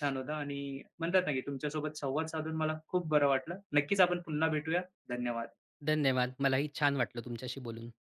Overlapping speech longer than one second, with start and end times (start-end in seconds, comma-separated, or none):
none